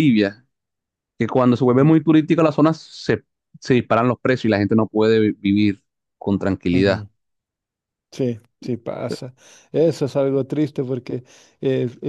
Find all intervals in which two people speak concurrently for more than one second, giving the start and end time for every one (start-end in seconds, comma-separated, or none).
none